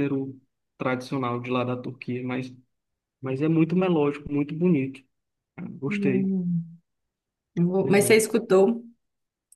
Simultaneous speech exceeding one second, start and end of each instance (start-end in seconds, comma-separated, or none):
none